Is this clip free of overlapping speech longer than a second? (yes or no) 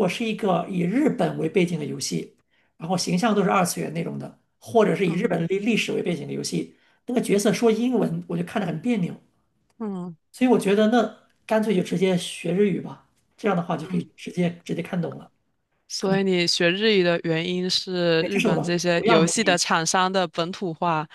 no